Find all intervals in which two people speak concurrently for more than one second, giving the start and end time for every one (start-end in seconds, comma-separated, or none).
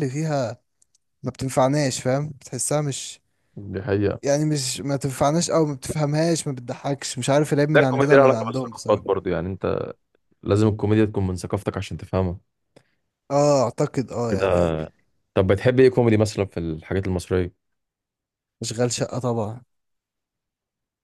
7.7-9.0